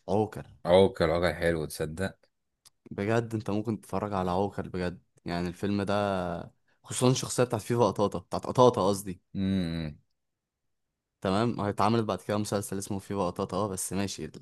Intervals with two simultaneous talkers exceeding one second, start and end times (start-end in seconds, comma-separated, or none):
none